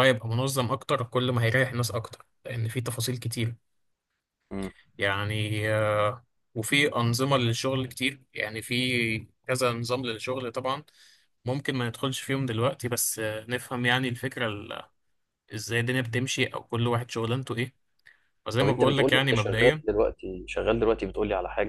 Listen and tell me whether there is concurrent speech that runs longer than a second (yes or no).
yes